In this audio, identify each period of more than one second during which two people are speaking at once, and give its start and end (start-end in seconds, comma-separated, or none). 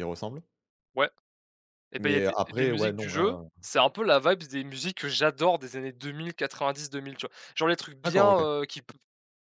2.0-3.5